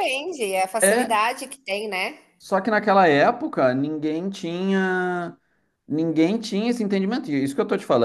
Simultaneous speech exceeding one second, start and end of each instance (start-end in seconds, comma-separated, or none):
none